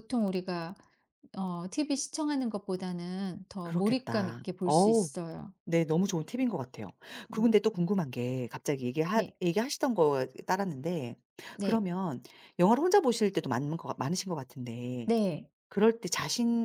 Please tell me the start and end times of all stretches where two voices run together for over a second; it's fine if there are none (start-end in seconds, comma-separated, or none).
3.6-5.1